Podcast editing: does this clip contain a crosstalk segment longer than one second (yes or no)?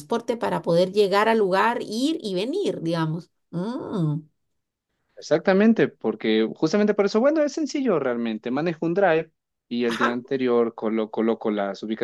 no